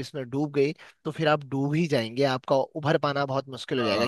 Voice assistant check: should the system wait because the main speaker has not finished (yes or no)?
yes